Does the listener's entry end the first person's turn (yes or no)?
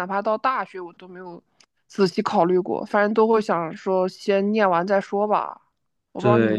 yes